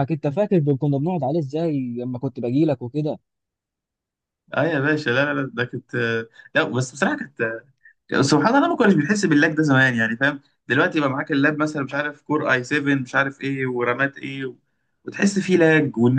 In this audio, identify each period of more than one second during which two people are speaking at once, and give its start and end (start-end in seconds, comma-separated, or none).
none